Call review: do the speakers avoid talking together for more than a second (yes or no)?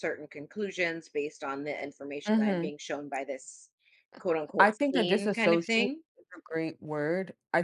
no